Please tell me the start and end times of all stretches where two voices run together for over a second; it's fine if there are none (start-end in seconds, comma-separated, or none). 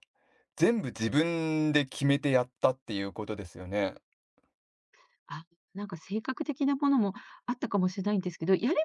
none